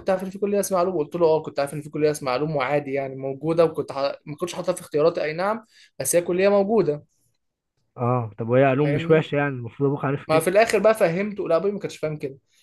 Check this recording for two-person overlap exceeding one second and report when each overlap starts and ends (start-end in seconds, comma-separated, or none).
none